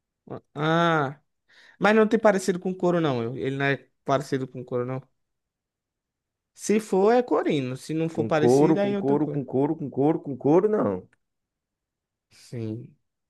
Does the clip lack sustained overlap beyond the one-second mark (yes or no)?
no